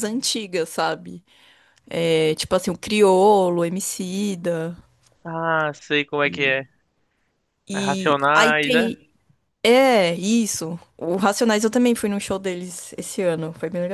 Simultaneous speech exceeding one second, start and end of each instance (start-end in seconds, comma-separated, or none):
7.7-9.0